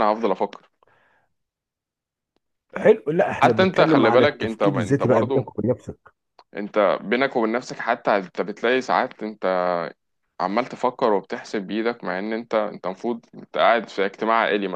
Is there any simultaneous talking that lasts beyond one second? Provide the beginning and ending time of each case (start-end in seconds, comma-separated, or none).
3.4-5.5